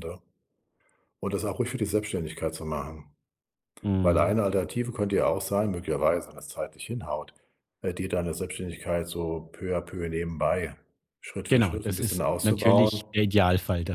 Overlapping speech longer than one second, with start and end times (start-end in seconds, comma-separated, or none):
11.5-13.0